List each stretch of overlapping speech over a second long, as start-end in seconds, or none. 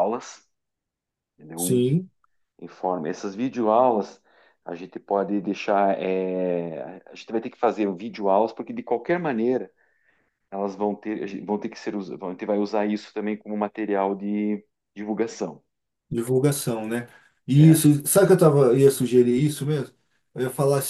none